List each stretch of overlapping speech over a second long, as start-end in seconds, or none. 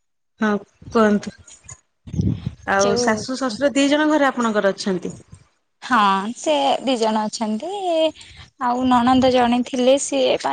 none